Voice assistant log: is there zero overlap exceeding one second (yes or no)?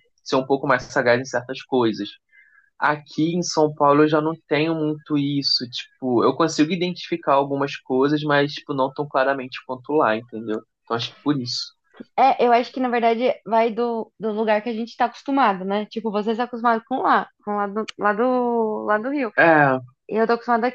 yes